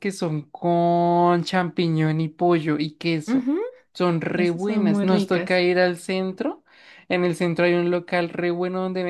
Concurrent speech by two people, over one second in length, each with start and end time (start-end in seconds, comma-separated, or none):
4.3-5.6